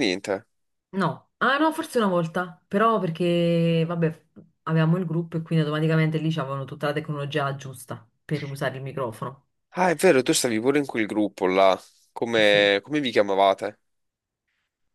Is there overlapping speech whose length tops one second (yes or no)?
no